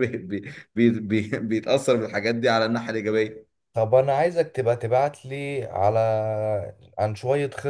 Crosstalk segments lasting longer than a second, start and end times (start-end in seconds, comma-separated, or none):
none